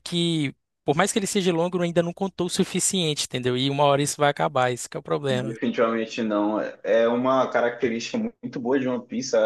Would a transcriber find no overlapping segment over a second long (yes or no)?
yes